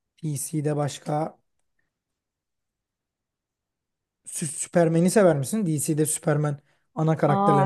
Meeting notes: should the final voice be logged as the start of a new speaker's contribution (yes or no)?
yes